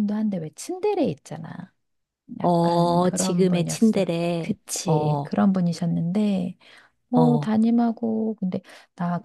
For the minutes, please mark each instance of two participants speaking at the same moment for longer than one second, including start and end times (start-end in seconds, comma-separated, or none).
2.4-5.3